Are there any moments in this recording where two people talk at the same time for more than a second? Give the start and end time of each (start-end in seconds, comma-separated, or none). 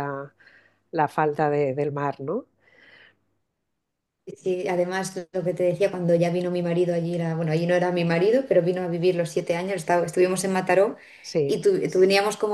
none